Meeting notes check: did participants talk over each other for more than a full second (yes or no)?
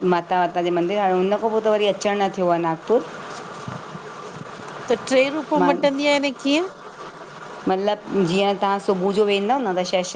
no